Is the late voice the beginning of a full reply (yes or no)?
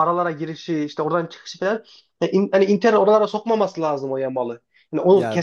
no